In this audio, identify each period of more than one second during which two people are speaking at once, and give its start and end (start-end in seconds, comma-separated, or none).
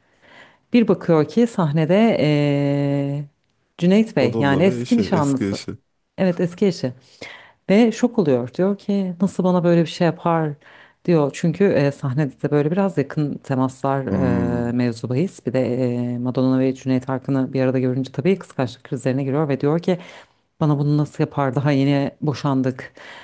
4.2-5.6